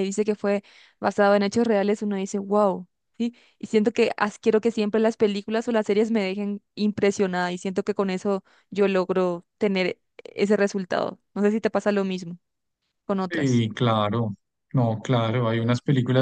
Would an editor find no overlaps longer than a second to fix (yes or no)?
yes